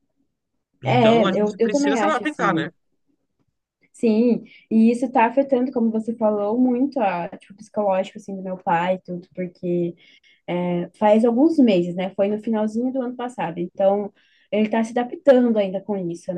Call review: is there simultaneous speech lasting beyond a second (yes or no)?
yes